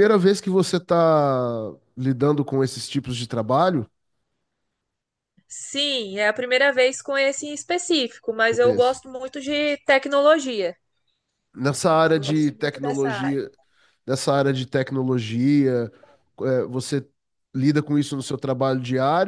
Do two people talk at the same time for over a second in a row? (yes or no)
yes